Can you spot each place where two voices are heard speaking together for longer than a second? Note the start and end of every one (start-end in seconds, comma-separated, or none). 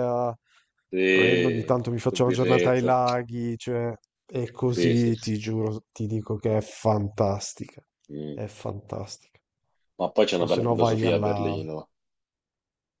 1.1-3.0, 10.4-11.6